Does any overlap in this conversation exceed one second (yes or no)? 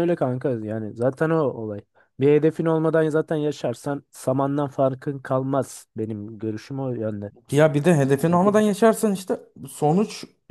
no